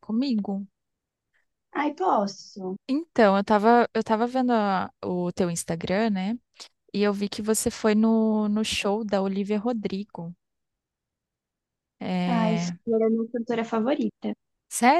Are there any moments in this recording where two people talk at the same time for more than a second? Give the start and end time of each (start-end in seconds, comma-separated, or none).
none